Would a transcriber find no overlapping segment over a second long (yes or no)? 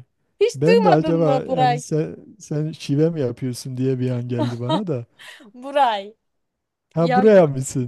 no